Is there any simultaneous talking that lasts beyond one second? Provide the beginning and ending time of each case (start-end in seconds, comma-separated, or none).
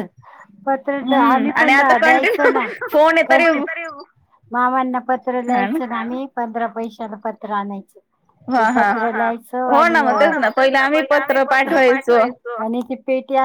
1.0-2.6